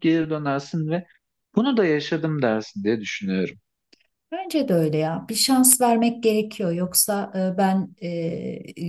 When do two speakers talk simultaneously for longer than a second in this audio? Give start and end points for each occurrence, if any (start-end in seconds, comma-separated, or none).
none